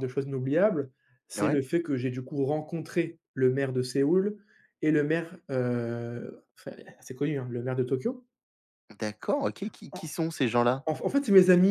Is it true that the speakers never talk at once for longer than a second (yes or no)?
yes